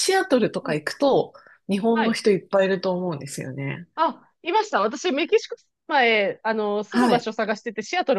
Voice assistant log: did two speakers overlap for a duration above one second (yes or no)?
no